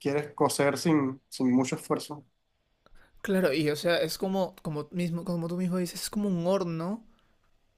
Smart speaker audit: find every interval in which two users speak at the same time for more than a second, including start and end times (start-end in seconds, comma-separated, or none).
none